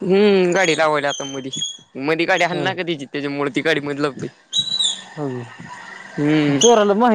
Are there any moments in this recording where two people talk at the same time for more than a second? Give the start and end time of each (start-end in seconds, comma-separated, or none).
none